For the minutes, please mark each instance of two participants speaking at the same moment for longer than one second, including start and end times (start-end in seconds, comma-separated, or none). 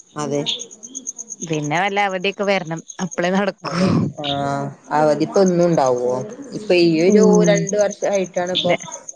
none